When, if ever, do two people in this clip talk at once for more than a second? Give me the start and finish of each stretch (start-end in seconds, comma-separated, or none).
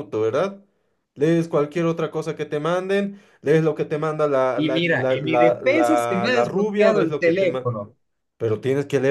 4.6-7.7